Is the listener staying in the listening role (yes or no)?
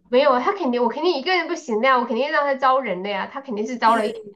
yes